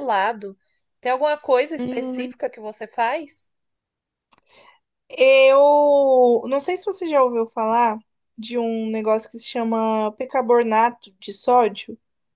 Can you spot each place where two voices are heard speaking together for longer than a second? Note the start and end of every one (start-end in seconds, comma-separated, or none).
none